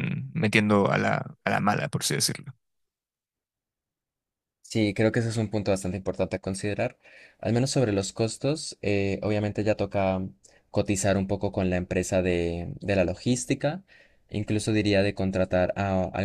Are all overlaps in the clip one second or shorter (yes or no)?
yes